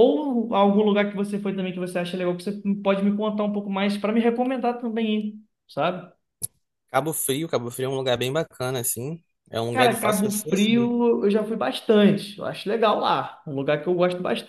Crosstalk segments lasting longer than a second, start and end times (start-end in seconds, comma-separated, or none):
9.7-10.9